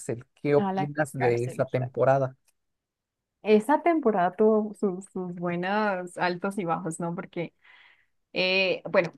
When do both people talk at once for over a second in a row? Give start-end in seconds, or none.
0.6-2.0